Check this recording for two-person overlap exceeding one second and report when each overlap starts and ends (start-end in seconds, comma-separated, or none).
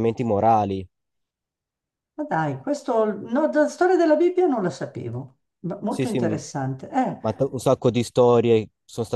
none